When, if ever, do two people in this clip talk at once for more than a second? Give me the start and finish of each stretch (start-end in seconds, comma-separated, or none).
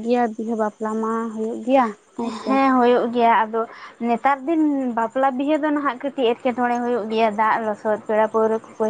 none